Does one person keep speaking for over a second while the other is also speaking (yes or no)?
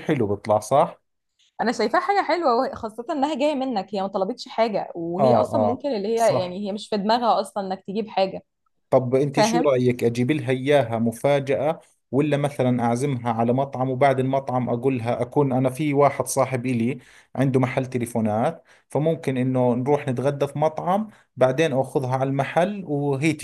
yes